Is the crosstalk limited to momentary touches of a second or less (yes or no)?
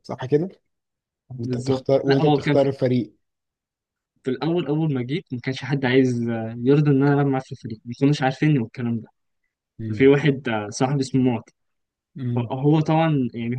no